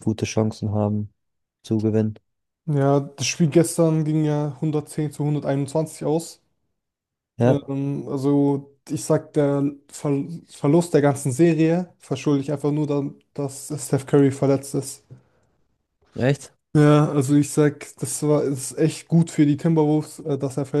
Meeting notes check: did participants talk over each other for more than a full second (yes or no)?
no